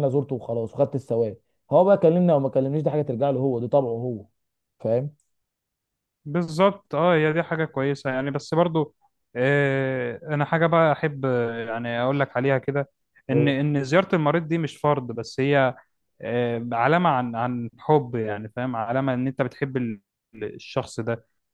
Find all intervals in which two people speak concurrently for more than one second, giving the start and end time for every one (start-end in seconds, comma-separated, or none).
none